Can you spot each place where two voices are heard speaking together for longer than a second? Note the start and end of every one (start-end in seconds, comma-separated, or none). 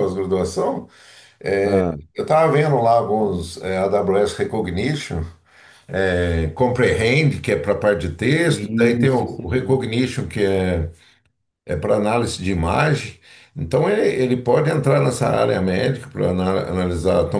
8.4-9.8